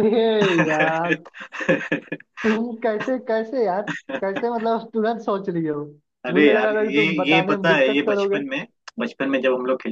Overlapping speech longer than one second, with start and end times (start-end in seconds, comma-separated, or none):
6.3-8.4